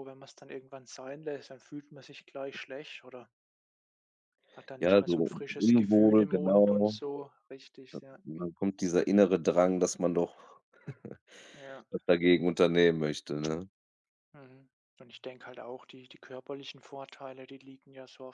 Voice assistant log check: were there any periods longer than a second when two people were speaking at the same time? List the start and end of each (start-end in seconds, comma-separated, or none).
4.8-7.0